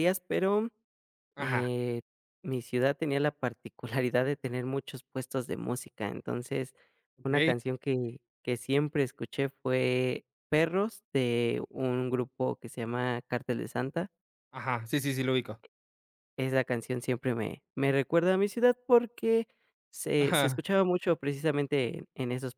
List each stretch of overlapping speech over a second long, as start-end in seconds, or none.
none